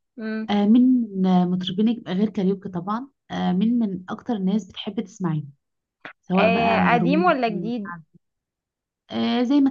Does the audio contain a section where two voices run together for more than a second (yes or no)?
yes